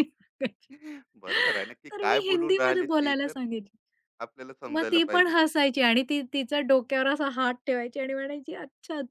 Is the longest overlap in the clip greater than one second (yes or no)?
yes